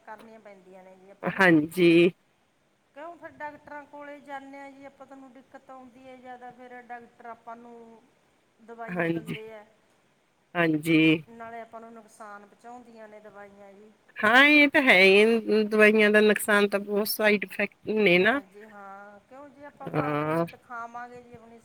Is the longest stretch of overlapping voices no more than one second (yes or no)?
yes